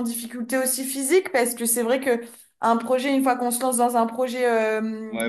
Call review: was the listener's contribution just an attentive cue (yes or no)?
no